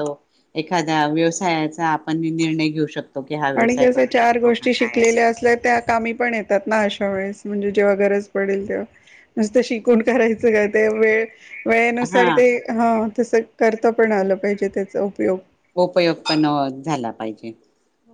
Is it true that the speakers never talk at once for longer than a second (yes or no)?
no